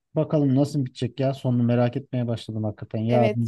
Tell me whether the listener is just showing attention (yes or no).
no